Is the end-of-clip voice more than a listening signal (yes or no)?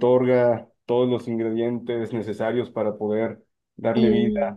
no